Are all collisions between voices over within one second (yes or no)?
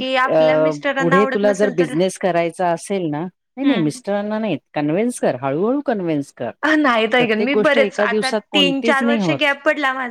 no